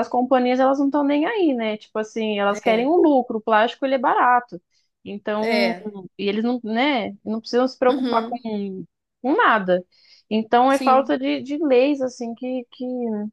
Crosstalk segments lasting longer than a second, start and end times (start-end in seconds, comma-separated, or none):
none